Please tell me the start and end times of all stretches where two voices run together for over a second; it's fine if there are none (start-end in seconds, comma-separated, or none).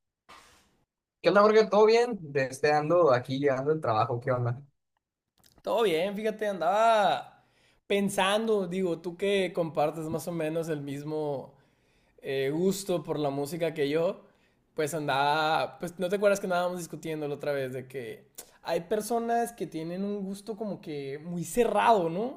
none